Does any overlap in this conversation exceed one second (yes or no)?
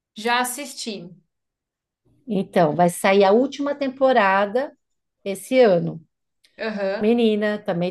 no